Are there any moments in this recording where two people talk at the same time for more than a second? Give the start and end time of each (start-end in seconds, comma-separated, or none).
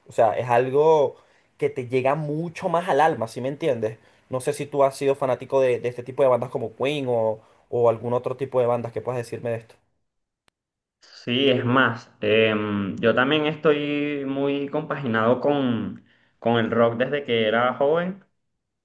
none